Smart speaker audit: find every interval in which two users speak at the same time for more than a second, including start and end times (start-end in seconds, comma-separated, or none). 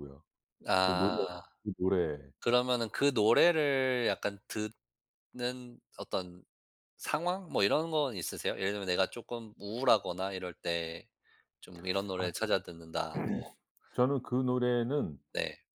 none